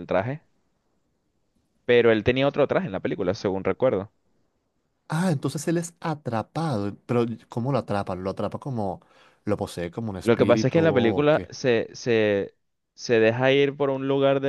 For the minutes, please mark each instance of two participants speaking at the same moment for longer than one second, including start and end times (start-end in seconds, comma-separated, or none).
10.2-11.5